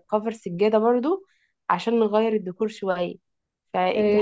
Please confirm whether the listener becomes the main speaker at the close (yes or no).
yes